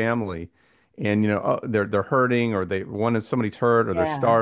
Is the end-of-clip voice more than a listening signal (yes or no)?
no